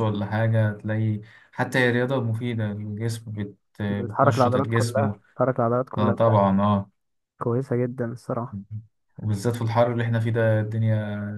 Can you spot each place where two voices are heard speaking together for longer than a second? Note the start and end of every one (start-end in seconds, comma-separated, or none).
3.9-5.1